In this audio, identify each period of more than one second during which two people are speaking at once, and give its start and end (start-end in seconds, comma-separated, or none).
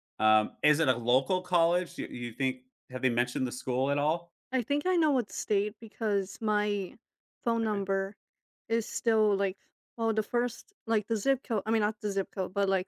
none